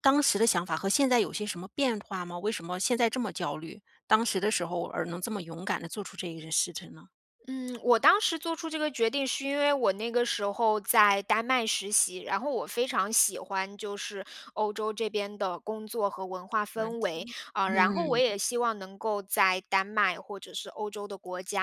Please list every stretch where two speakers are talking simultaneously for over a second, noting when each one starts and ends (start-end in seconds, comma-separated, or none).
16.7-18.2